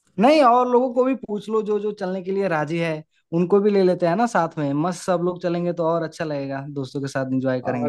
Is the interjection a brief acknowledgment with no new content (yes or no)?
no